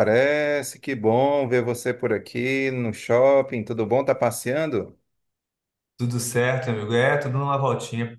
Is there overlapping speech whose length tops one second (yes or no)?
no